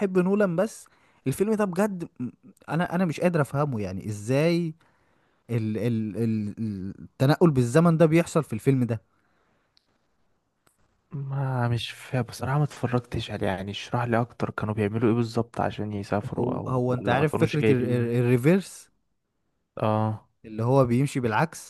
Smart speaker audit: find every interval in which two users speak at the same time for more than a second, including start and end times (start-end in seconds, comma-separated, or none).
16.3-18.1